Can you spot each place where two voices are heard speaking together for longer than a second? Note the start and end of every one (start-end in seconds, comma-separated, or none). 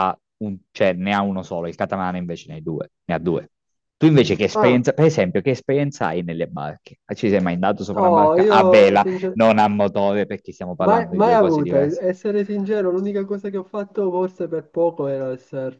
7.9-9.4, 10.8-12.0